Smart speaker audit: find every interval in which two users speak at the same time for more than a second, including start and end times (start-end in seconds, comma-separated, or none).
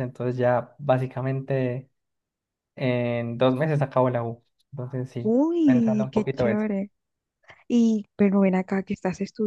5.2-6.7